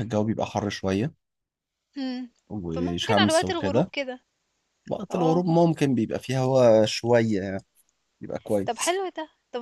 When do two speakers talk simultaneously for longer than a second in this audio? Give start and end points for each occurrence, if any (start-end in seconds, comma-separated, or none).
2.7-3.9